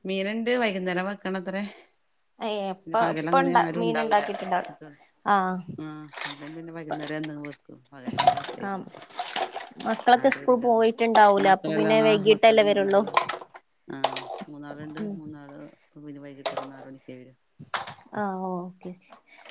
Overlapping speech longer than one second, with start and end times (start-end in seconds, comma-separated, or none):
2.8-4.7, 11.4-13.0